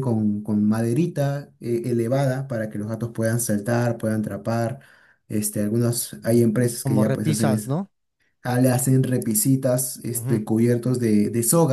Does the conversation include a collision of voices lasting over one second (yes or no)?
yes